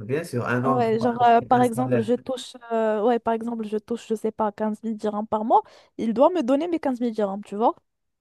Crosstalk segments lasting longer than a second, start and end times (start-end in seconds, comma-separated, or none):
0.6-2.1